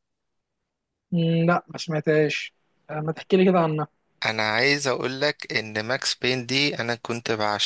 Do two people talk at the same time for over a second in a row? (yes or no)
no